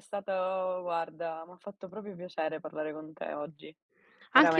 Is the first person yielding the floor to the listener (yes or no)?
yes